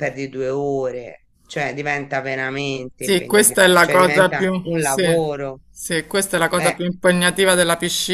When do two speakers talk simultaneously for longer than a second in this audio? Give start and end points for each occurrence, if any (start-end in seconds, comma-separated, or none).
3.0-5.0